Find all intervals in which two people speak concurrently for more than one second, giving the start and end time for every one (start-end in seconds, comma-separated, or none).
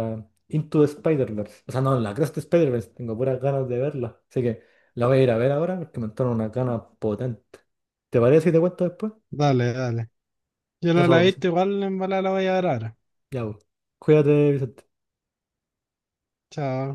none